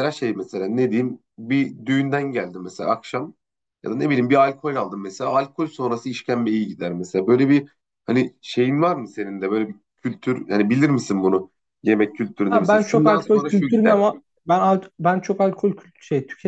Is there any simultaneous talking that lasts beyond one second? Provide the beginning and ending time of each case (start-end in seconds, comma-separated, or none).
12.5-14.0